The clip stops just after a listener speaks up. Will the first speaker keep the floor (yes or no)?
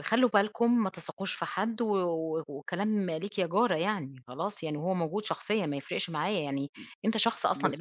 no